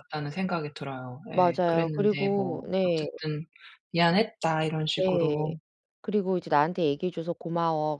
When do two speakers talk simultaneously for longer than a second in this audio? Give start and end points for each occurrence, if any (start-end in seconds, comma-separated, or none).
1.3-3.0